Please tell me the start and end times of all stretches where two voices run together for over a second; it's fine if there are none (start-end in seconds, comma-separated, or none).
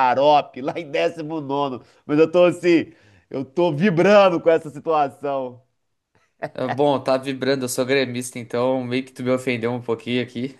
none